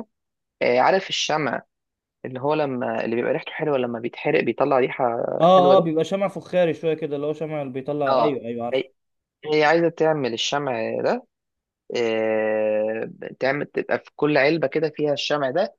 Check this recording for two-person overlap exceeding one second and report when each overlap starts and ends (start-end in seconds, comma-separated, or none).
none